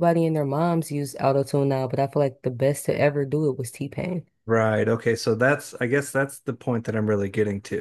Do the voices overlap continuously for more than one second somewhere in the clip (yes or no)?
no